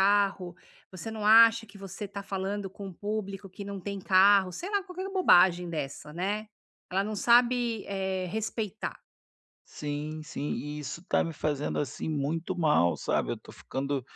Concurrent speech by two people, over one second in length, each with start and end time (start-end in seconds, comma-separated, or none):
none